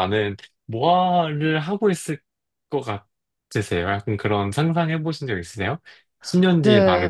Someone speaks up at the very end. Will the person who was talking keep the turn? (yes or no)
no